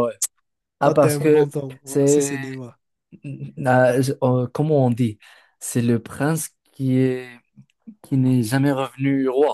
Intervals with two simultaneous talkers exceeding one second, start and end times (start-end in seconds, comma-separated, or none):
0.8-2.5